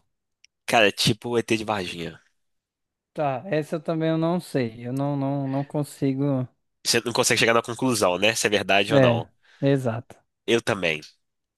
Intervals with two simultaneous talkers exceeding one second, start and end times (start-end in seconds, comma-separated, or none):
none